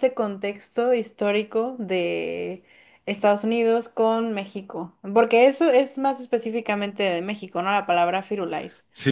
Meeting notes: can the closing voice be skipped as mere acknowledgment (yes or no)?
no